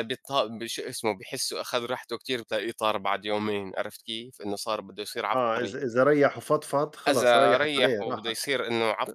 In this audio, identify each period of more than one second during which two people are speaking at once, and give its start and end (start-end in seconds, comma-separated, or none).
7.1-8.4